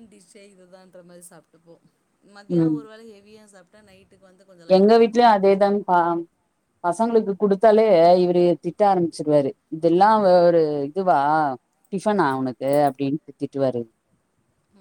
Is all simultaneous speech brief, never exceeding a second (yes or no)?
yes